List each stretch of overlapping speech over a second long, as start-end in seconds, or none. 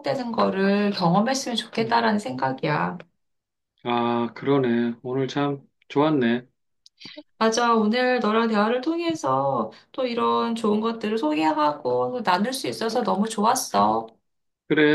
none